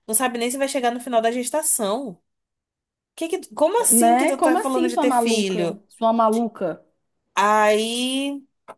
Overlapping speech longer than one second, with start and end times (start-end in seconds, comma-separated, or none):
3.9-5.8